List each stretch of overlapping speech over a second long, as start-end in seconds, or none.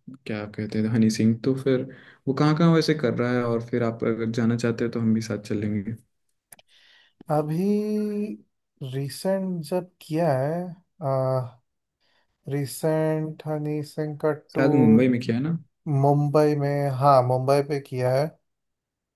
none